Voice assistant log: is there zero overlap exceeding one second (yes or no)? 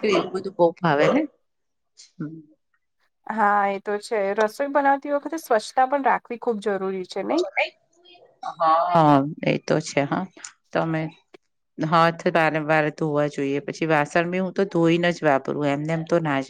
yes